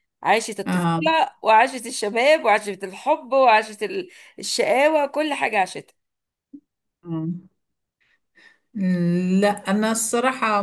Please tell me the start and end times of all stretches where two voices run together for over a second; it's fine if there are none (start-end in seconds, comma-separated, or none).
none